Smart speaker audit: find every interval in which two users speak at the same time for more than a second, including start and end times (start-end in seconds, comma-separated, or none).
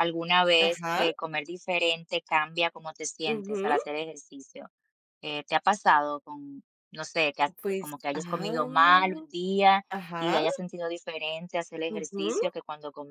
7.6-9.2